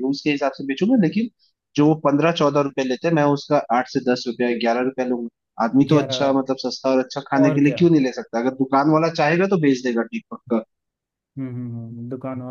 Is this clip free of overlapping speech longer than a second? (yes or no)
yes